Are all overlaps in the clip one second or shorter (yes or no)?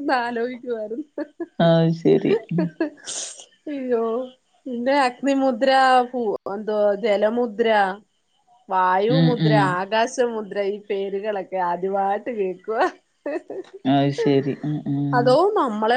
yes